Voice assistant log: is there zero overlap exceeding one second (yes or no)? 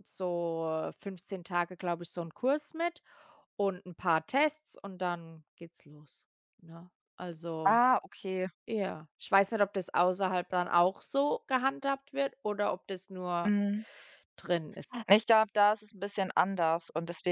yes